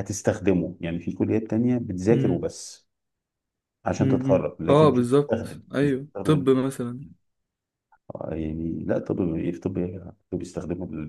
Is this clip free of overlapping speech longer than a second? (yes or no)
no